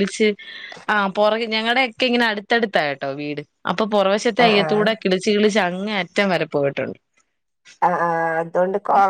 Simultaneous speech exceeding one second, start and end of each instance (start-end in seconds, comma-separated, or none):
none